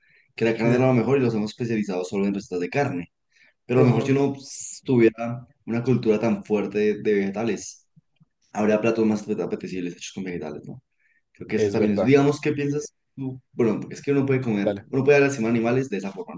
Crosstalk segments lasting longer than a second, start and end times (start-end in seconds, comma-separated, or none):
none